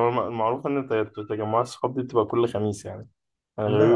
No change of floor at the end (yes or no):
no